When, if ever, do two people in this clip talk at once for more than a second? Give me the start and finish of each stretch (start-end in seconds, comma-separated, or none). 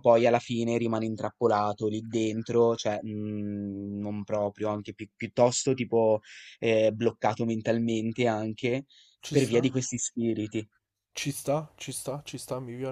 none